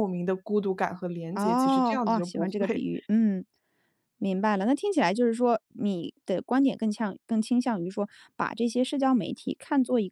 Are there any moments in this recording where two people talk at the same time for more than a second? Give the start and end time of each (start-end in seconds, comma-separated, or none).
1.4-2.8